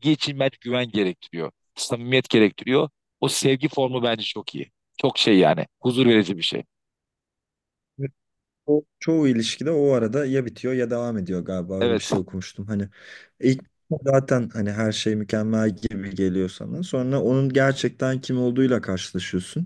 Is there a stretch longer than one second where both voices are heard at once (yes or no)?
no